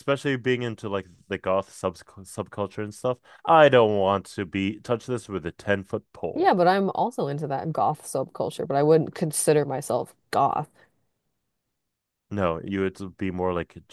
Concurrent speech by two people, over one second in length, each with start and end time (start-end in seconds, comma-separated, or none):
none